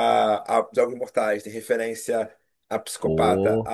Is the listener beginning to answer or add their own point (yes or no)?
no